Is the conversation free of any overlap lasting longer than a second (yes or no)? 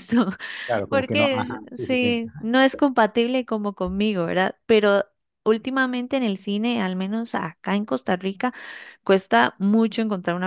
no